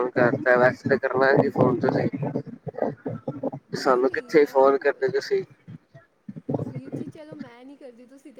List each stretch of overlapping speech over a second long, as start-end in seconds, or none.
3.8-5.4